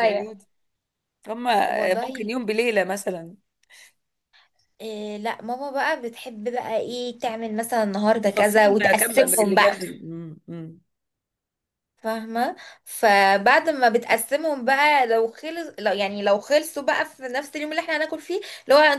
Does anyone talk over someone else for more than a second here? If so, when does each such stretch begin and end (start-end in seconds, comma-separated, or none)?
8.3-9.8